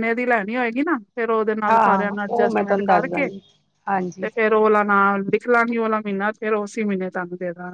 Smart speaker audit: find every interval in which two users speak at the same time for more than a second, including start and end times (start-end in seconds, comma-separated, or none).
1.7-3.3